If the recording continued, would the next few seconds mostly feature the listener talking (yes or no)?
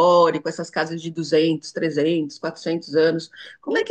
no